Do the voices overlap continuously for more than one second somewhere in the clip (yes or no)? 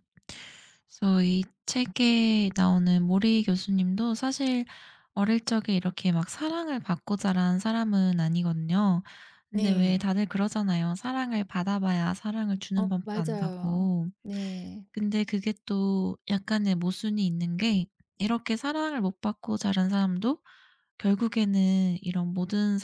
yes